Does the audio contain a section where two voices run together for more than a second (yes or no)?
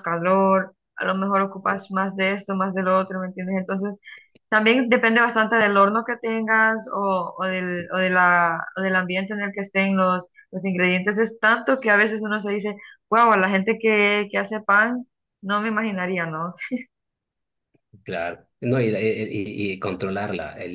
no